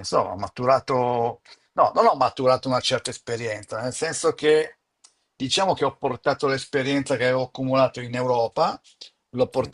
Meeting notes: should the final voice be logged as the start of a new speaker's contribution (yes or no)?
no